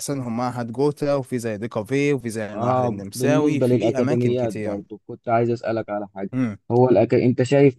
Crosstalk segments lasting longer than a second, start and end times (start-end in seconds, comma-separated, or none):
2.5-4.8